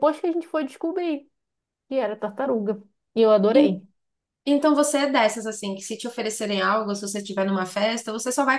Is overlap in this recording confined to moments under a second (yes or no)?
yes